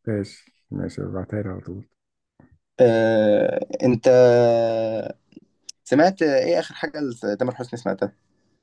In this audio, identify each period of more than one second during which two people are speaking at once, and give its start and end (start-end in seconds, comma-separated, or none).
none